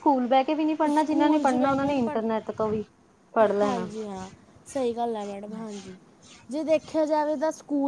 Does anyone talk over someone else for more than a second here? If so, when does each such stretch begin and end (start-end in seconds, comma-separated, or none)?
1.0-2.2